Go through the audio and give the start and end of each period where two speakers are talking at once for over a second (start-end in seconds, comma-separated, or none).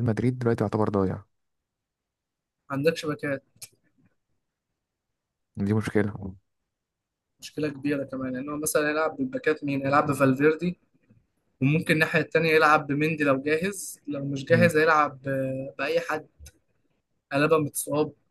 none